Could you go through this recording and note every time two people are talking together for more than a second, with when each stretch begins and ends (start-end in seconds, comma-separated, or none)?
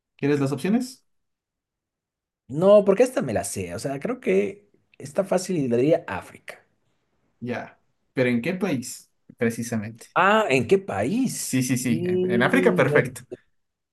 11.3-12.9